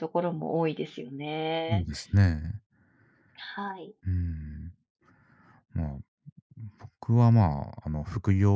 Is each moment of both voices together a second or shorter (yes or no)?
yes